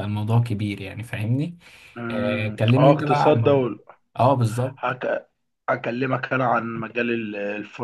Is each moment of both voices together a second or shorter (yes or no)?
no